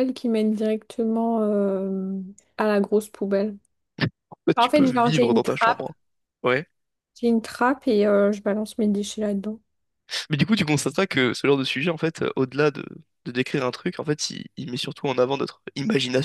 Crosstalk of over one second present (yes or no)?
yes